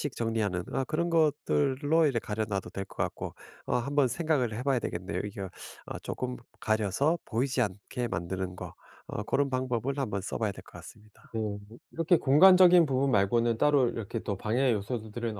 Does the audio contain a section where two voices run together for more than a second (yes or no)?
no